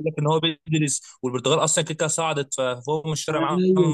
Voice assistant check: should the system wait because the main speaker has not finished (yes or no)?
no